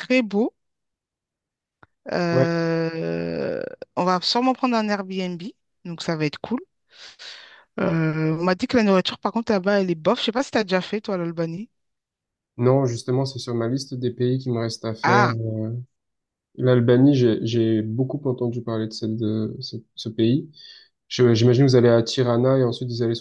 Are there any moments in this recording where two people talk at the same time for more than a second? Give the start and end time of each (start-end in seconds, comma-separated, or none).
none